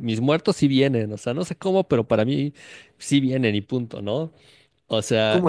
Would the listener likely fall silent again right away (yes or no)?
no